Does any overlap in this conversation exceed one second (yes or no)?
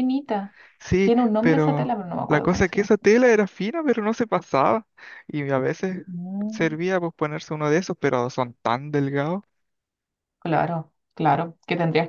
yes